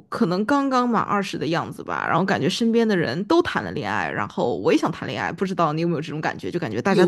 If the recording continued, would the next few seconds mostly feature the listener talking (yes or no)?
yes